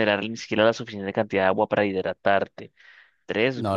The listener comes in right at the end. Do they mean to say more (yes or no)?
no